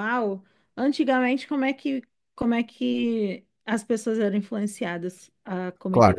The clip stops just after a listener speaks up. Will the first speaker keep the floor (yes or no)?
no